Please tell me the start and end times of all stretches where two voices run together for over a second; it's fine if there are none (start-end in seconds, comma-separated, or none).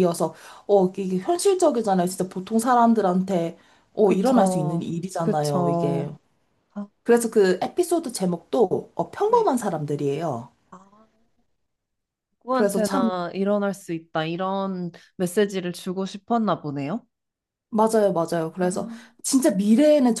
4.0-6.1